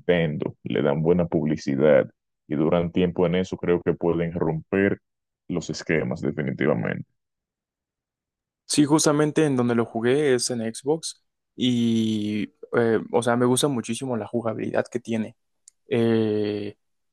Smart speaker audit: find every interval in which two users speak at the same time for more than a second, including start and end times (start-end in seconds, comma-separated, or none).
none